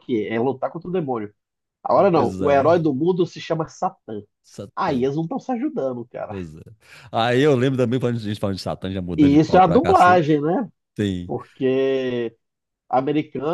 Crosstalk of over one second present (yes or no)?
yes